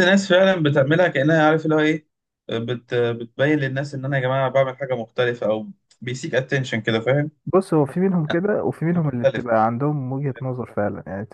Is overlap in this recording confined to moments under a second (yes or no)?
yes